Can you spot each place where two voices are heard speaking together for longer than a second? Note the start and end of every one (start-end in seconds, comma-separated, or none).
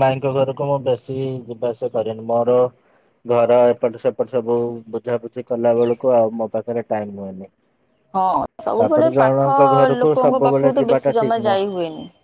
10.0-11.6